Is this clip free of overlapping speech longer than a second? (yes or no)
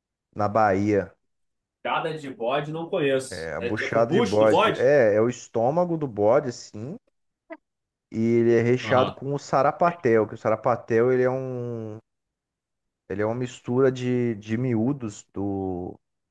no